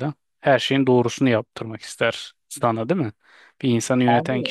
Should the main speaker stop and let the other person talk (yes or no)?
no